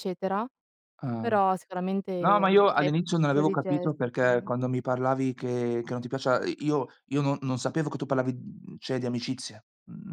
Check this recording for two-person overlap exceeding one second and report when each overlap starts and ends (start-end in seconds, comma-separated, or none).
2.2-4.2